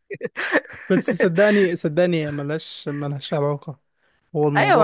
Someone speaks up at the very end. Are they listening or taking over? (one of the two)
taking over